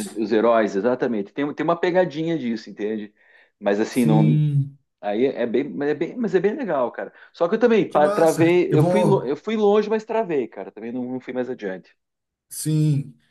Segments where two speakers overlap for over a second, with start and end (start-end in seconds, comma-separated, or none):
7.9-9.3